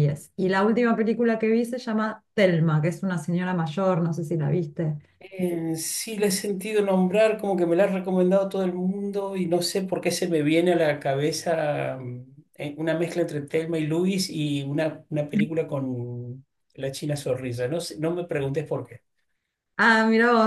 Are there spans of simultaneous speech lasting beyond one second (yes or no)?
no